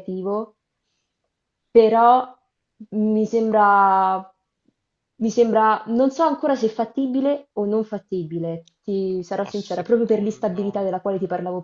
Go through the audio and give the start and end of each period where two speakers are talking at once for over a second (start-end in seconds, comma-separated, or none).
9.4-10.9